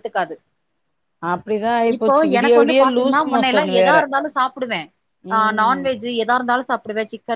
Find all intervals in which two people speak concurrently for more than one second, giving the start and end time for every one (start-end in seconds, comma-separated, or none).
1.9-4.0